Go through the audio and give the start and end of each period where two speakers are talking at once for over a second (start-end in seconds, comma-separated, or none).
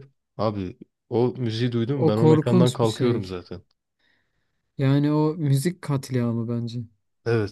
1.9-3.3